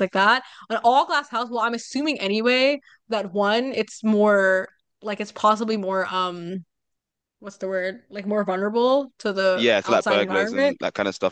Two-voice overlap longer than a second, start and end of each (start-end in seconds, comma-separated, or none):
9.5-10.8